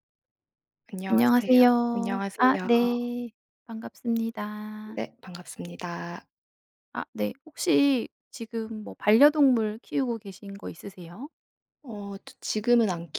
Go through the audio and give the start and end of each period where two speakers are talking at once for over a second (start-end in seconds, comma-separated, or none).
1.1-2.9